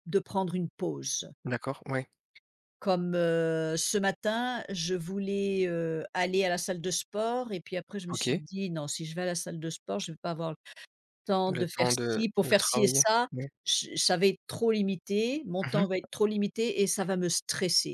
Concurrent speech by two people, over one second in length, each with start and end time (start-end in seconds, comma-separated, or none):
11.5-13.3